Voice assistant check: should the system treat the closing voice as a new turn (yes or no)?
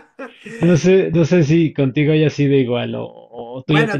yes